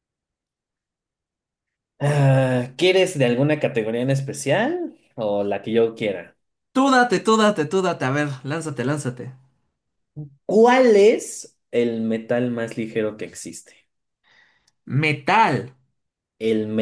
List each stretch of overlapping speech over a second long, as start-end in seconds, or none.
none